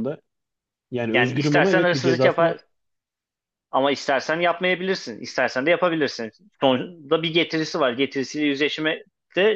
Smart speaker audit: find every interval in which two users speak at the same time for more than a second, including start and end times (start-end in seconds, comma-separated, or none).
1.1-2.6